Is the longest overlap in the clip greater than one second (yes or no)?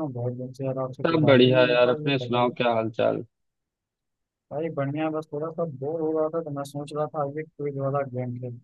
yes